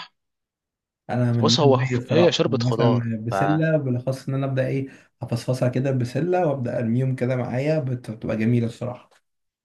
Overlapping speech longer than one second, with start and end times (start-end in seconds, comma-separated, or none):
1.3-3.1